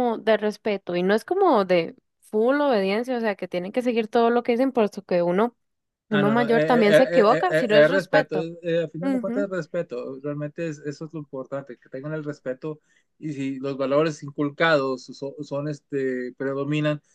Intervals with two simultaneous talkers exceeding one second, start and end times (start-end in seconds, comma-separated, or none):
6.1-8.5